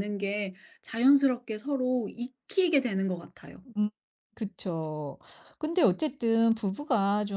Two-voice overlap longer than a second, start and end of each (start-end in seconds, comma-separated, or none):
none